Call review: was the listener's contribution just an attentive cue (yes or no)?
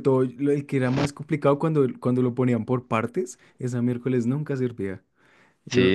no